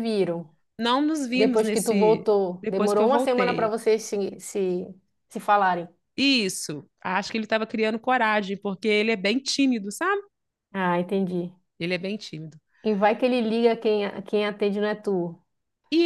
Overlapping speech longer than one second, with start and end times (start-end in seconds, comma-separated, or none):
1.3-3.8